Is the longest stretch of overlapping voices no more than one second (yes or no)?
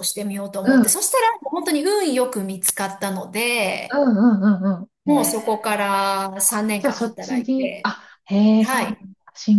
no